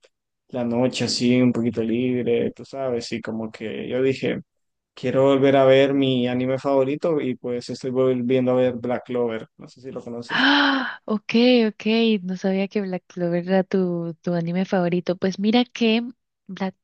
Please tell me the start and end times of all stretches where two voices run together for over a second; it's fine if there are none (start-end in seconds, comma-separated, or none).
none